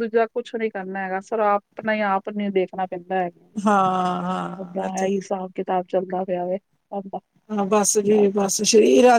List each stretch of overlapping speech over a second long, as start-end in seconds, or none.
none